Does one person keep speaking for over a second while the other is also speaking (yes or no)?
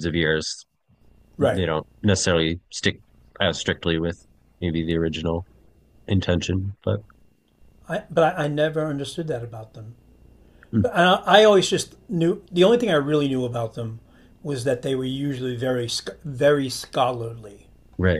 no